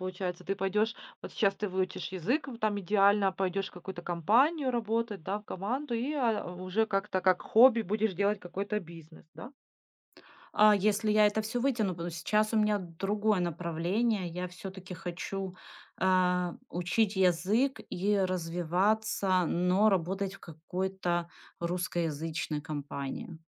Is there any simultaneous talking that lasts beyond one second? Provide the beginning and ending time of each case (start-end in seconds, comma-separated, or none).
none